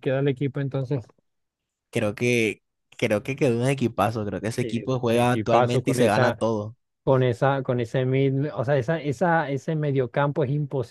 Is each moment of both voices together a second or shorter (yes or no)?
no